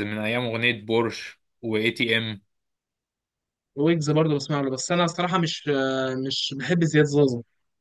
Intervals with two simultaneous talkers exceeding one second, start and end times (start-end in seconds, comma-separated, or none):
none